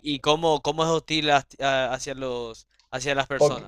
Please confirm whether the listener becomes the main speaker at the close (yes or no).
yes